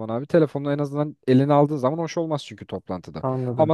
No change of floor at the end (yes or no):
yes